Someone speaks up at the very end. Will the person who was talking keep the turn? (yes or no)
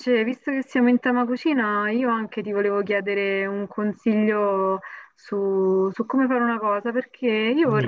yes